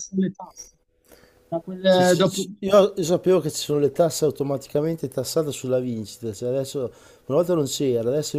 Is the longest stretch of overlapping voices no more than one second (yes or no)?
yes